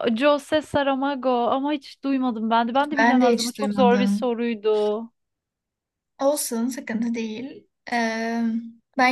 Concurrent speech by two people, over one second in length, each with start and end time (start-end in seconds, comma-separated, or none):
3.0-4.3